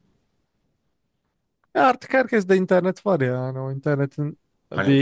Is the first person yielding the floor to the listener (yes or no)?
yes